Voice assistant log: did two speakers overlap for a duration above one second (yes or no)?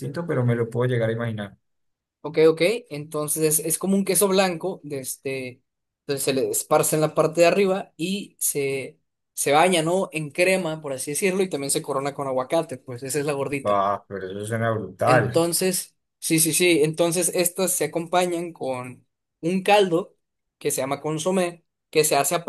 no